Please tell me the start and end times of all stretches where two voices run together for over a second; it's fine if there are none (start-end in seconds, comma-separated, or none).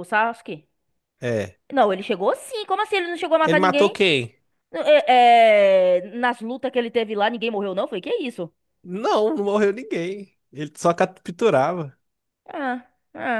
none